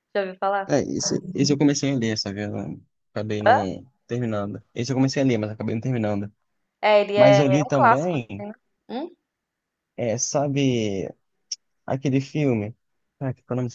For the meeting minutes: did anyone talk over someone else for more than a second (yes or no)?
yes